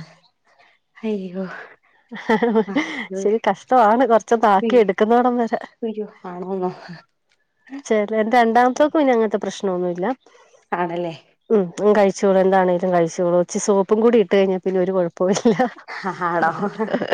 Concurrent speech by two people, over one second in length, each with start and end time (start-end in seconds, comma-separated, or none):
none